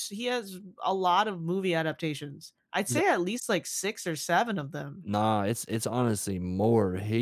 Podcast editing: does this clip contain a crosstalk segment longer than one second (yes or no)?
no